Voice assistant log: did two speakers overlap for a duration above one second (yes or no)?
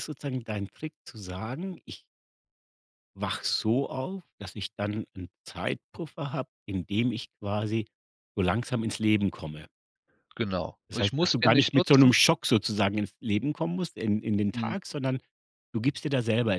yes